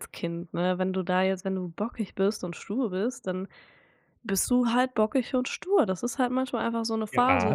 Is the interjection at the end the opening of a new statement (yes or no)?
yes